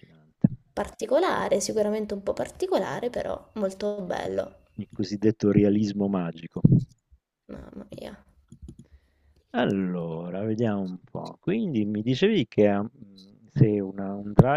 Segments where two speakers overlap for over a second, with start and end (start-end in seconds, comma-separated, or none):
none